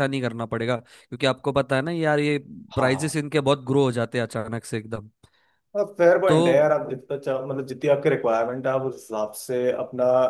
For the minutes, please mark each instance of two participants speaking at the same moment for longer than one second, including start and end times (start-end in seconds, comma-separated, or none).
none